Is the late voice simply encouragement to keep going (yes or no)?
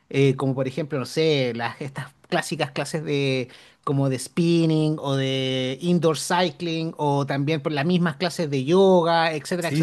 no